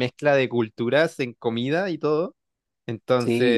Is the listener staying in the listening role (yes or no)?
yes